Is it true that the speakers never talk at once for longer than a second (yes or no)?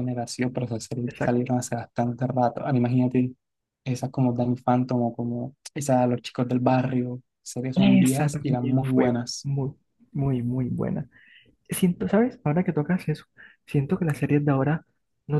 no